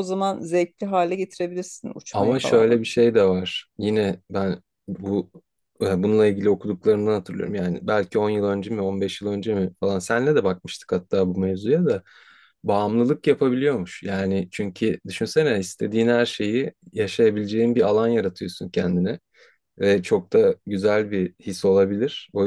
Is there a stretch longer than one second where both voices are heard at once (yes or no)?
no